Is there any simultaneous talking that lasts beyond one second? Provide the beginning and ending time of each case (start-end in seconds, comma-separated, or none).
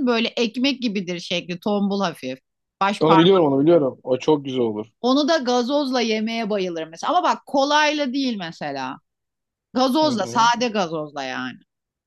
none